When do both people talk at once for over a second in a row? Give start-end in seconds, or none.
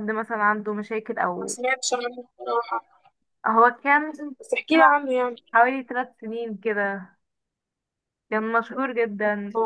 none